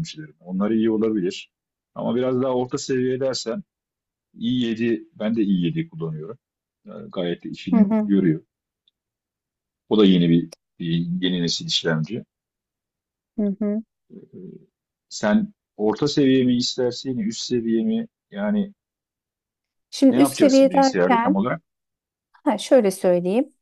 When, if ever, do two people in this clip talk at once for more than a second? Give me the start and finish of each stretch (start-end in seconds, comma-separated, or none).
20.1-21.4